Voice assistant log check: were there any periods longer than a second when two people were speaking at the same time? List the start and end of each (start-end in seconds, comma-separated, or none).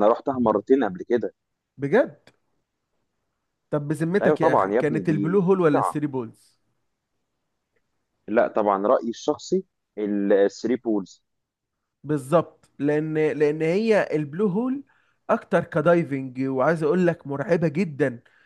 4.2-6.0